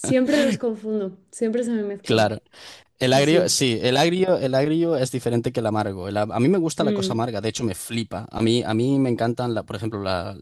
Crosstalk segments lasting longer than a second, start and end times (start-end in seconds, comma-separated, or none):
none